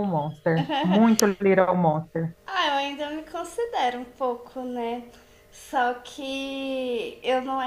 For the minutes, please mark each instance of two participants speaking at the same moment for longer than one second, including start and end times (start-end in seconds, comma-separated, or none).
none